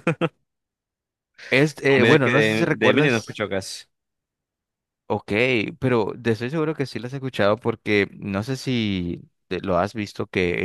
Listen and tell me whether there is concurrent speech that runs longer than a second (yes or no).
yes